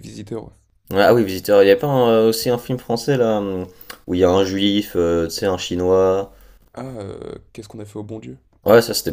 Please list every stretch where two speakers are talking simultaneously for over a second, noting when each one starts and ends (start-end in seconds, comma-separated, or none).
none